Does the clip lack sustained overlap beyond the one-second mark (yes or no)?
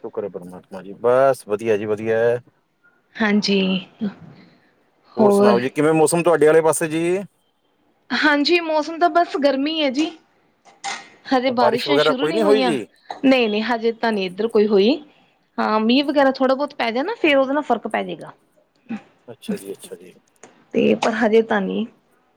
no